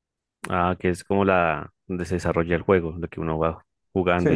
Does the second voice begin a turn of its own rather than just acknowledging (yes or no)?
yes